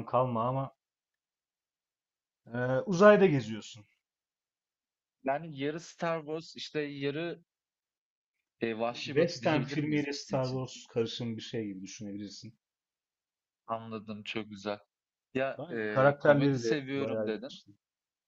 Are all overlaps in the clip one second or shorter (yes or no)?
no